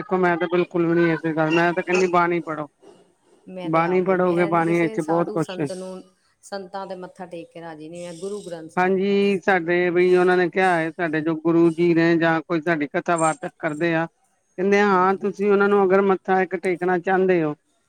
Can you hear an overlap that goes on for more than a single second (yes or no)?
yes